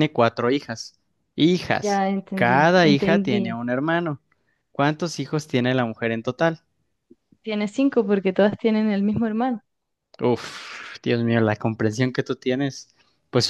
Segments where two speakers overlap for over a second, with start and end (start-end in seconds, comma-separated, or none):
1.8-3.4